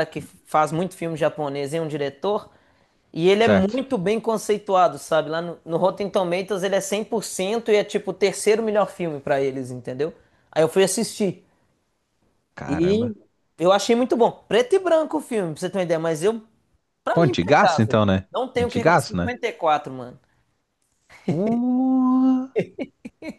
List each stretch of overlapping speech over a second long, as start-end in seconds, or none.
17.1-19.3